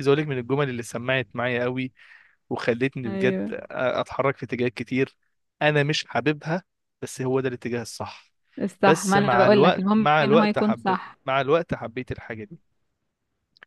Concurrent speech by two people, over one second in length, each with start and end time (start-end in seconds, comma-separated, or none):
8.8-11.2